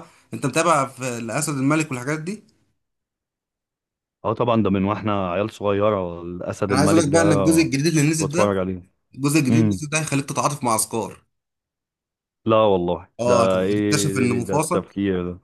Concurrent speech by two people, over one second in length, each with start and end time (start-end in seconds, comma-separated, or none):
13.2-14.9